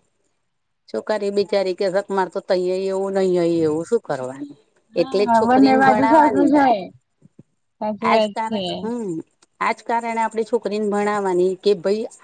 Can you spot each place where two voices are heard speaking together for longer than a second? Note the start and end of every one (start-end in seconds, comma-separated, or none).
5.0-6.6